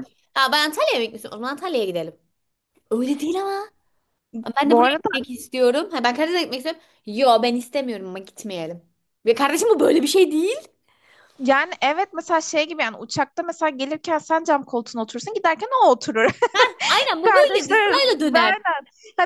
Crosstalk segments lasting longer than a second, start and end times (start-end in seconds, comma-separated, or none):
17.2-18.6